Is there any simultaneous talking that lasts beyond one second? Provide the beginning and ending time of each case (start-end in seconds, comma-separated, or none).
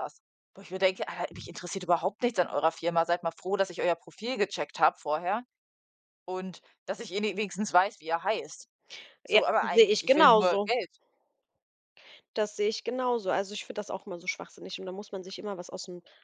9.3-10.7